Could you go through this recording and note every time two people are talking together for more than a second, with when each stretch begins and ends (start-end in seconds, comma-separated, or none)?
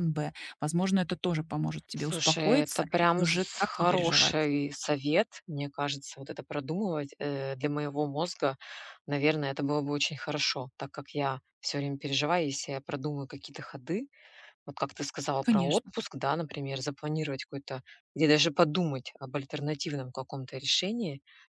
1.9-4.4